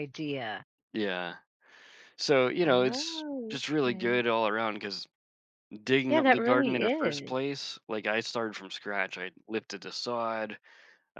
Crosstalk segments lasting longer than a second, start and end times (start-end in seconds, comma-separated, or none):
2.6-4.1, 6.1-7.3